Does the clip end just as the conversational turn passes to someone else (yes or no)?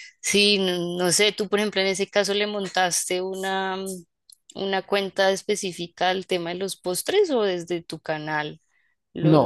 yes